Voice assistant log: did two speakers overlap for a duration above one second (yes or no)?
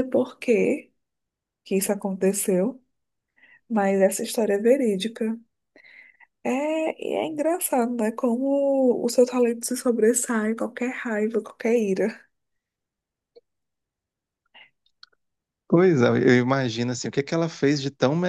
no